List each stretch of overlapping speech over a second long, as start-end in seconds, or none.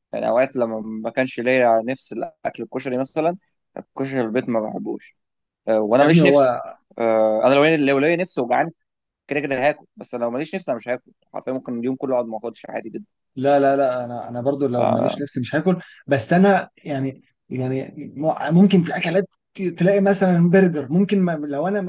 none